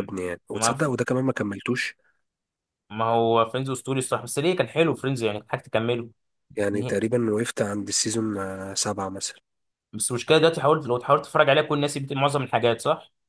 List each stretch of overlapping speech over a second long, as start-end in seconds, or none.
none